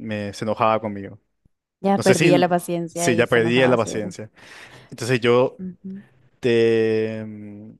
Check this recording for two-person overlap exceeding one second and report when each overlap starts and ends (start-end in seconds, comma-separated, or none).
2.9-4.1